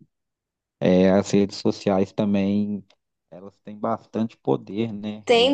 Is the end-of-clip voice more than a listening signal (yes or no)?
yes